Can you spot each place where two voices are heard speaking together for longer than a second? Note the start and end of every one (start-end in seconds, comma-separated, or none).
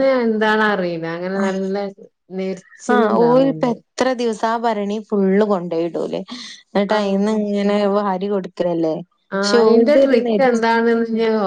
none